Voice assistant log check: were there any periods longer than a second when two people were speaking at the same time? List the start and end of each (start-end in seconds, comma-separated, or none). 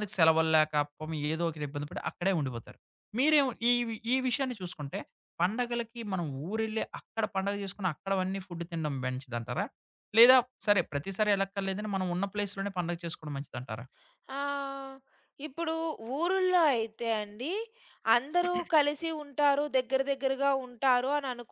none